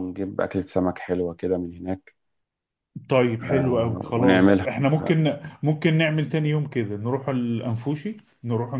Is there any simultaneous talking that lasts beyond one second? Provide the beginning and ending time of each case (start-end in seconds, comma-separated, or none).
3.5-5.2